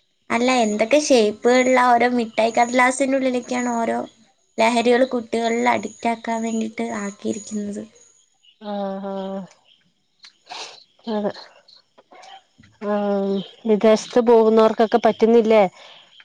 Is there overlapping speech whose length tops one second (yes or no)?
no